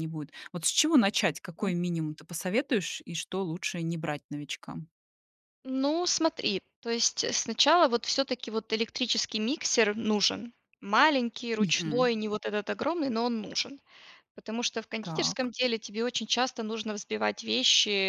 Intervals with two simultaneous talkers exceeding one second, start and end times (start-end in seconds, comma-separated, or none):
none